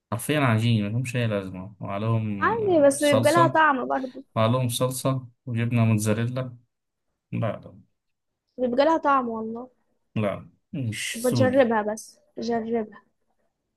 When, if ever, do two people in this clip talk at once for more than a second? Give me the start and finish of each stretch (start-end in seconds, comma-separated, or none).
2.4-3.6